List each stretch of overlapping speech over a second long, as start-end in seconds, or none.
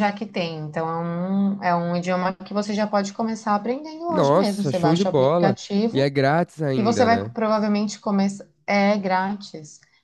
4.1-6.1